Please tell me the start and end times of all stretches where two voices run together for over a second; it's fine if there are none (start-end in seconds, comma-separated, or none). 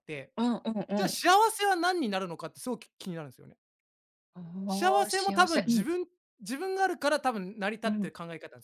4.7-5.9